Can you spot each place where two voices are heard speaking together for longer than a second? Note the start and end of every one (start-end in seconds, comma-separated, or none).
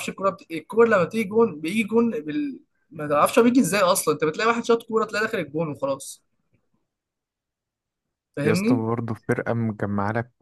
none